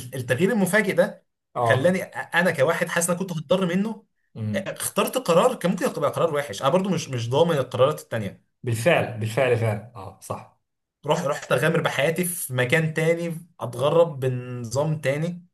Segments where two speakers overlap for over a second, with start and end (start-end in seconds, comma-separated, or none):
none